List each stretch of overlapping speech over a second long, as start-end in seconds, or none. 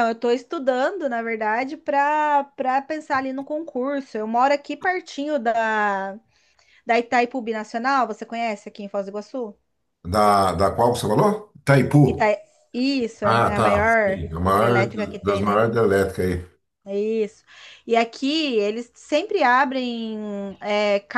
13.2-15.7